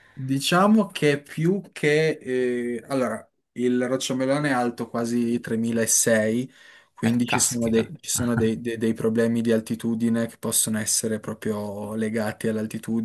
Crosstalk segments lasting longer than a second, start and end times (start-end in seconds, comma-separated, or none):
7.0-8.5